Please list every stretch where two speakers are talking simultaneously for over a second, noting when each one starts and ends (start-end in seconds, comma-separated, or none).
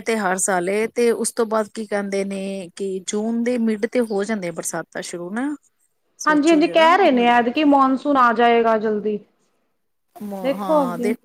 6.2-7.6